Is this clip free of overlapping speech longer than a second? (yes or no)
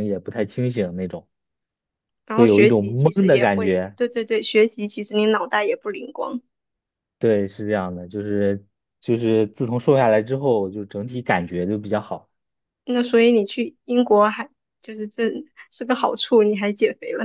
no